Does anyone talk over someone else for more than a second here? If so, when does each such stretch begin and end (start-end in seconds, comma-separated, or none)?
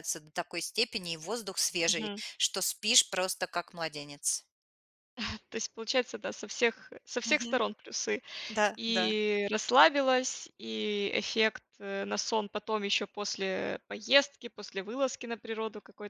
none